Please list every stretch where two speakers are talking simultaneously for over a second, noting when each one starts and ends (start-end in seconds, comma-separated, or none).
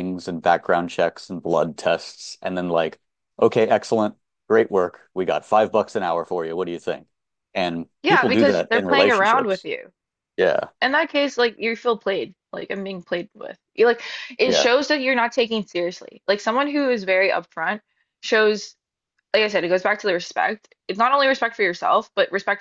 8.0-9.7